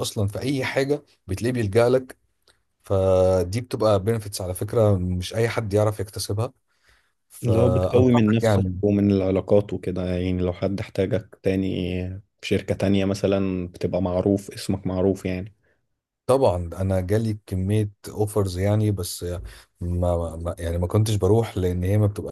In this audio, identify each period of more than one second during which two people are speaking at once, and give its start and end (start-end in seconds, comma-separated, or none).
7.4-8.8